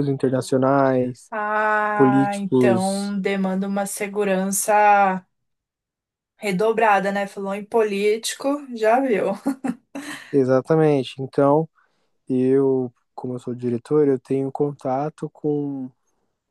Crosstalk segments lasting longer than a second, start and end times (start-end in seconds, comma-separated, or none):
1.9-3.1